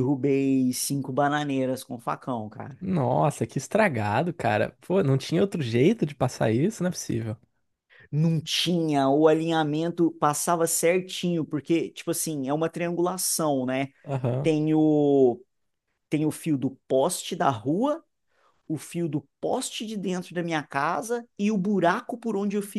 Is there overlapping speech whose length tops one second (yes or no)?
no